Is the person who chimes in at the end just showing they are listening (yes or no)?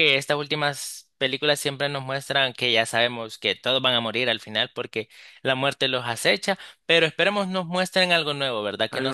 yes